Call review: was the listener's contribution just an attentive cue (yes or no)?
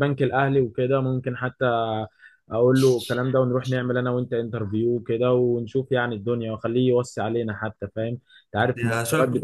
yes